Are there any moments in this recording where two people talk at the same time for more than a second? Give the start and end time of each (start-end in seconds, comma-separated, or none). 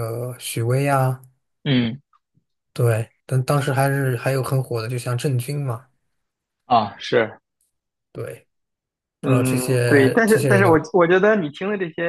9.2-10.8